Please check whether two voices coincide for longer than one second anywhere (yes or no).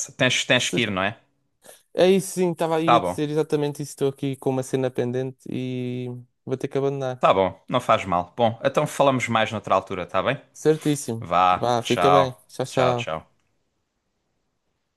yes